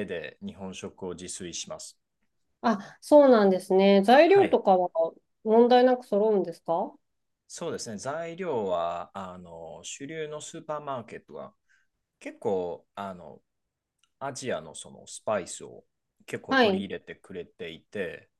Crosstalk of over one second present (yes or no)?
no